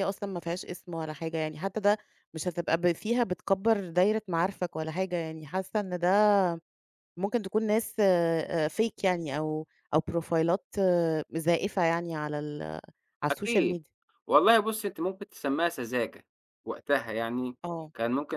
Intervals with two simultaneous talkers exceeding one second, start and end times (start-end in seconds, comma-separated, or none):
none